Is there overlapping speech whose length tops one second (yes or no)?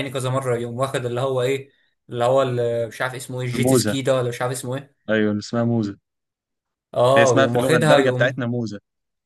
yes